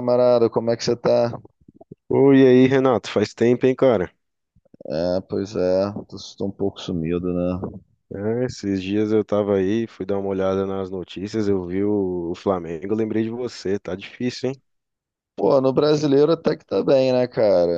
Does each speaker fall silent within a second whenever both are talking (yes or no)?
yes